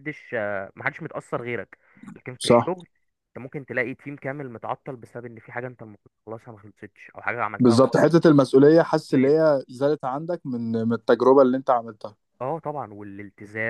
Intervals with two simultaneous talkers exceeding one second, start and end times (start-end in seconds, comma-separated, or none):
none